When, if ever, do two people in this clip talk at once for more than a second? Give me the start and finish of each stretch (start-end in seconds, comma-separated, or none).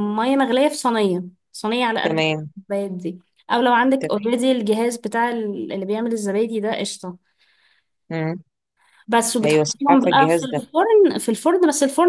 9.4-10.7